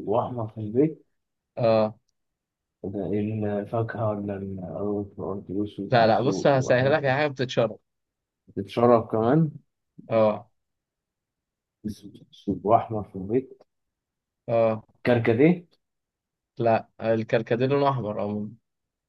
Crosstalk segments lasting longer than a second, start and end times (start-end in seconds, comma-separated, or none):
5.9-7.2